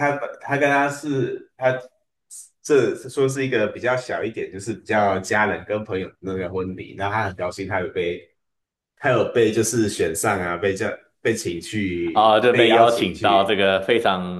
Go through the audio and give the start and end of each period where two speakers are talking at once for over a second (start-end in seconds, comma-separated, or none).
12.1-13.6